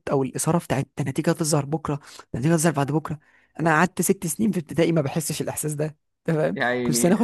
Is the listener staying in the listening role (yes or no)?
yes